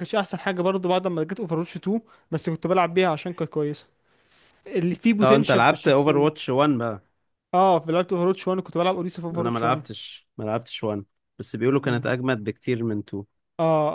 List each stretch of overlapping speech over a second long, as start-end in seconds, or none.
5.2-6.5